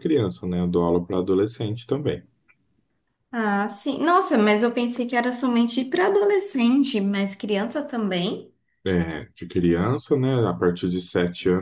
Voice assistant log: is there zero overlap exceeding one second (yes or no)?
yes